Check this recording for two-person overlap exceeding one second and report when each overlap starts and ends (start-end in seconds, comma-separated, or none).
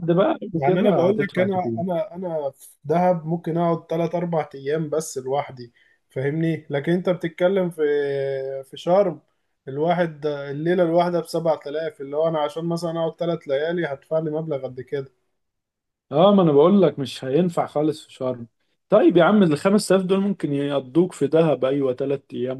0.5-1.8